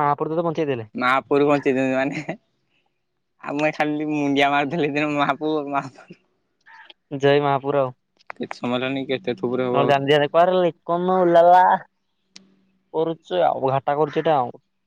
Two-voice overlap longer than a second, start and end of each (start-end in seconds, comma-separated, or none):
none